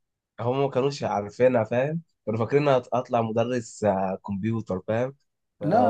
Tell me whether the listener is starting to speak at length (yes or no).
no